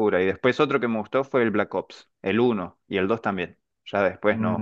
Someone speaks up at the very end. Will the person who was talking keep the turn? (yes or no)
no